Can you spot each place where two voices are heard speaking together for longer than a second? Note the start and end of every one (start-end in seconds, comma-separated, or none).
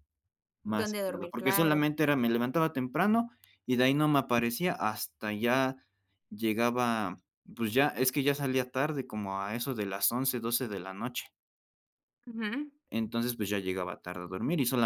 0.6-1.9